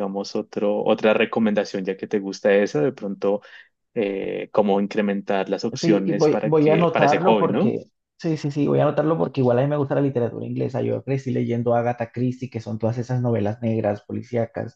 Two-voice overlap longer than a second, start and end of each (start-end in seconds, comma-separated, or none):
5.8-7.8